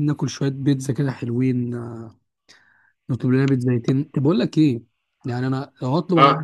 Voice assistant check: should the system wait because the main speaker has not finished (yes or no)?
yes